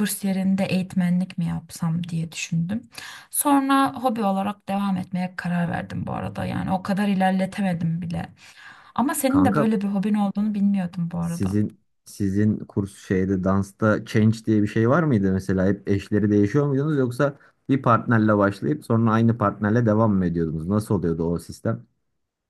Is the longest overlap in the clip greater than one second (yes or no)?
no